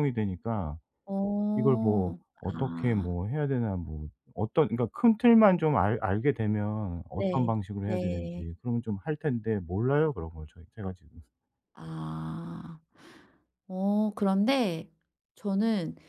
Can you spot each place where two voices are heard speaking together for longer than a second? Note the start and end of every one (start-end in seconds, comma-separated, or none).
1.6-3.1, 7.1-8.4